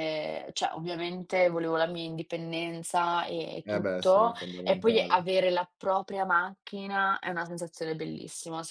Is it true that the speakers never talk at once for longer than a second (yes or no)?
no